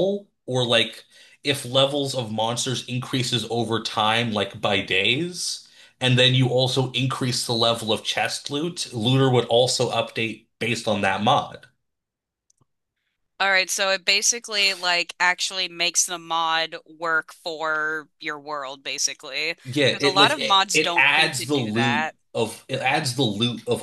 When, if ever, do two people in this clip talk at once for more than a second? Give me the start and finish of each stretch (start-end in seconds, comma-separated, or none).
19.9-22.2